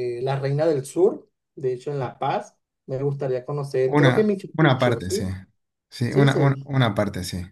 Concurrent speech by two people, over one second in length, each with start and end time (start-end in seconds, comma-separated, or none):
3.9-5.1